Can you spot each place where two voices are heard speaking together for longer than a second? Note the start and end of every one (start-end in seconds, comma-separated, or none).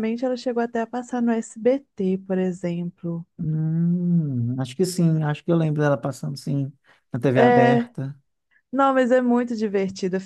none